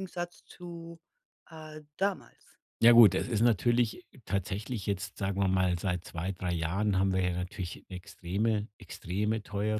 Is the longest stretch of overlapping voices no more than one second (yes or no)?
yes